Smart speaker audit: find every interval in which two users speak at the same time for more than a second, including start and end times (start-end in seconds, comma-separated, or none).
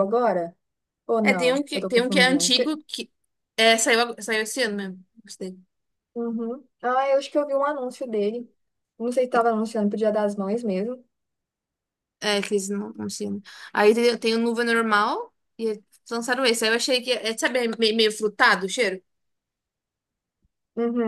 1.2-2.5